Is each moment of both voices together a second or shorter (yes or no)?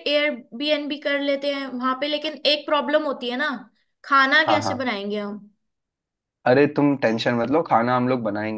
yes